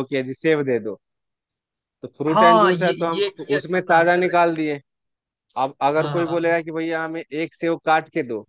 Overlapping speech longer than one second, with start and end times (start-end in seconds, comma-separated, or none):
2.3-4.4